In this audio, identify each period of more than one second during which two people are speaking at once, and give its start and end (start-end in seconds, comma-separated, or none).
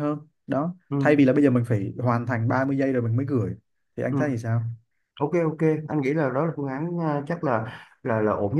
none